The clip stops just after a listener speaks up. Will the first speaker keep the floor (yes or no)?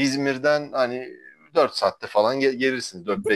yes